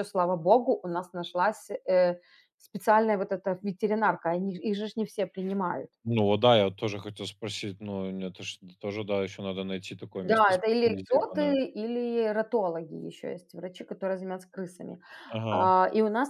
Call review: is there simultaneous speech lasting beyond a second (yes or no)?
yes